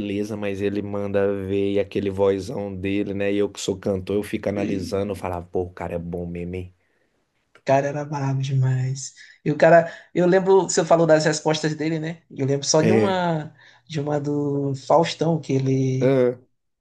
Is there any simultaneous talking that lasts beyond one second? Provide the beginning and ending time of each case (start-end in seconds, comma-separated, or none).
none